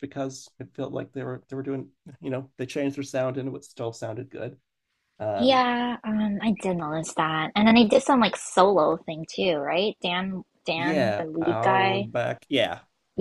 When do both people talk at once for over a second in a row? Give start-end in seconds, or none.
10.8-12.1